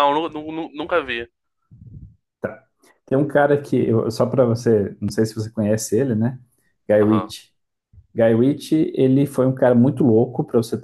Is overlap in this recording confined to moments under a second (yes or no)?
yes